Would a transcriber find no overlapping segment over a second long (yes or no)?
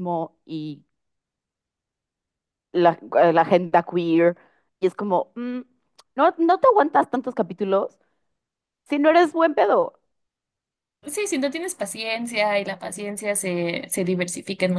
yes